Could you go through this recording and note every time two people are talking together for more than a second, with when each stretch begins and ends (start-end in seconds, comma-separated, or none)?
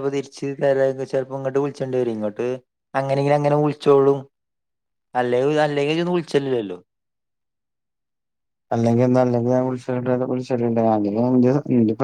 none